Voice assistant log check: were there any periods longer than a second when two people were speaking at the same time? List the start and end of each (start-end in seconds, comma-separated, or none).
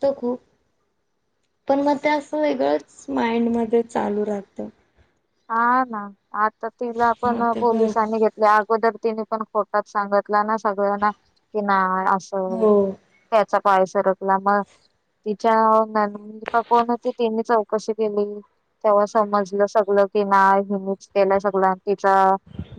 none